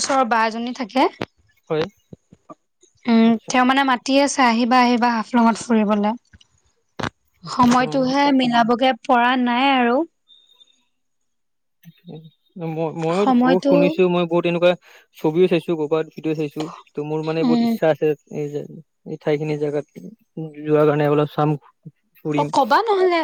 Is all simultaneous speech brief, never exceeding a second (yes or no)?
yes